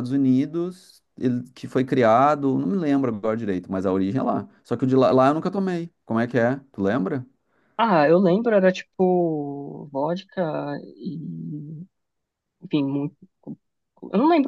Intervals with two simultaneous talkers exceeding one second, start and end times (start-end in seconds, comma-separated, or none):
none